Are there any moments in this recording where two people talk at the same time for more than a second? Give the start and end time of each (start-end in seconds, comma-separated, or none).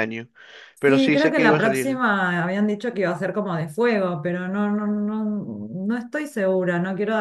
0.8-2.0